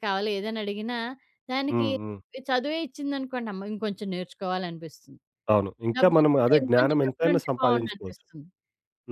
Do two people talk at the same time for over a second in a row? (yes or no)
yes